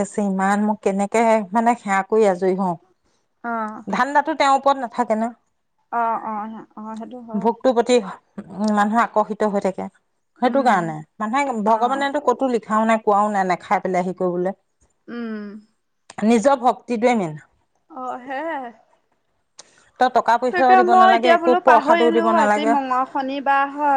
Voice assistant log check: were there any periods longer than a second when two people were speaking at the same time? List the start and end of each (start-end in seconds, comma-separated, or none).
20.5-22.7